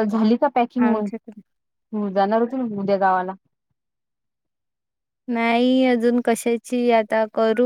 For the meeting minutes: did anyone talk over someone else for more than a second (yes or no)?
no